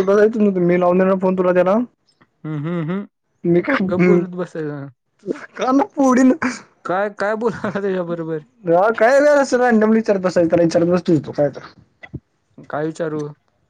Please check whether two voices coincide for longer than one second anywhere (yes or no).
no